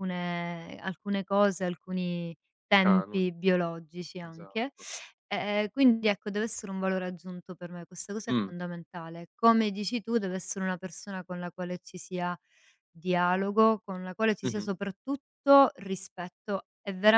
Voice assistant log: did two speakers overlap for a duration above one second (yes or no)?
no